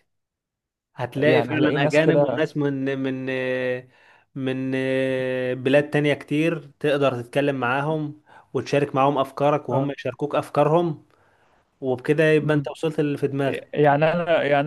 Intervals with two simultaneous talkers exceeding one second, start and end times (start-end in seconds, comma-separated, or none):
1.1-2.4